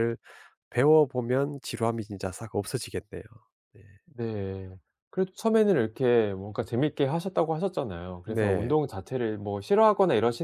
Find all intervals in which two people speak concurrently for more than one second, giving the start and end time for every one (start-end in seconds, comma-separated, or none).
none